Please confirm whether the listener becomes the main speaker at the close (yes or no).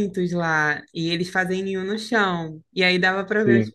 no